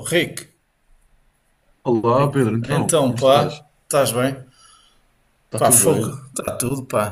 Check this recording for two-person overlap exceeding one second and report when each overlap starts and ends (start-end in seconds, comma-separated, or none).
2.2-3.6